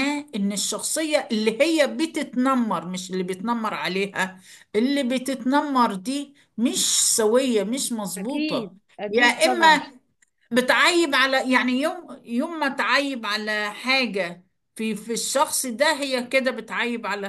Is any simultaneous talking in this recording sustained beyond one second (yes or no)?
yes